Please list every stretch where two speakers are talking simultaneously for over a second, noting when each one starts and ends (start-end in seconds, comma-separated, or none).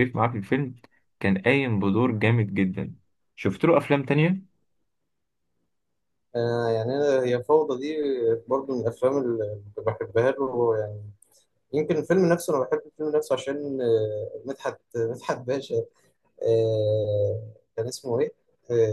none